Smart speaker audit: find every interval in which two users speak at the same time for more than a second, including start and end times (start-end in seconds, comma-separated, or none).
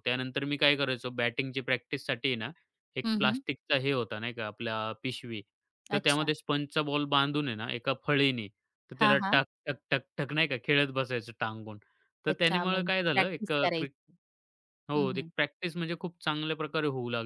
12.3-13.9